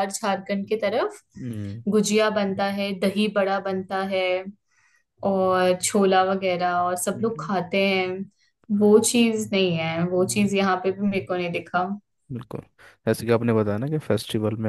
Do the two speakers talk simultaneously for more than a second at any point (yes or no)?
no